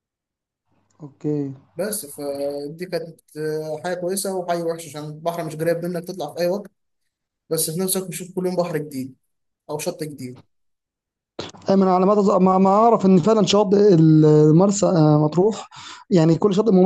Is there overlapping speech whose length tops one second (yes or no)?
no